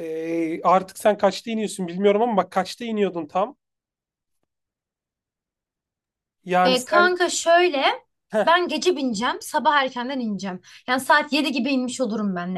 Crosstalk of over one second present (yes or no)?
no